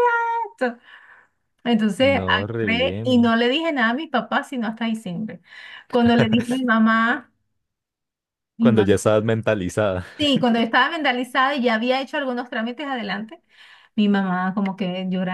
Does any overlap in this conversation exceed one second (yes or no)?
yes